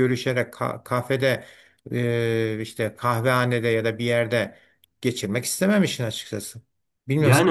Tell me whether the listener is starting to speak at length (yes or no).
yes